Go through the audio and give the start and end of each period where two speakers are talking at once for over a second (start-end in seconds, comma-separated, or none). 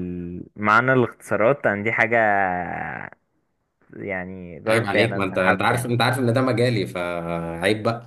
4.7-6.0